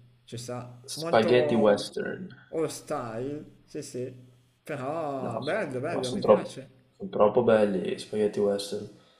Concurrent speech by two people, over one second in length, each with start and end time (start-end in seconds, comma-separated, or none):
5.2-6.8